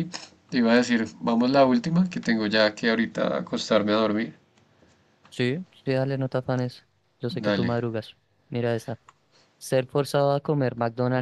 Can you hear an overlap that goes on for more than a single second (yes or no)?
no